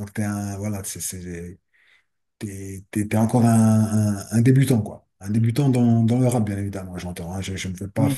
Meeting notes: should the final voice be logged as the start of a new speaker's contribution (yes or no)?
no